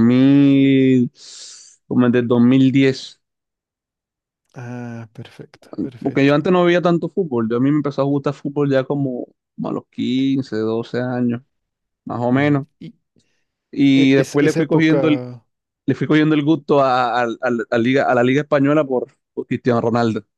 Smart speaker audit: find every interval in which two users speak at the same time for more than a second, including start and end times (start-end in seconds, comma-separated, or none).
13.9-15.2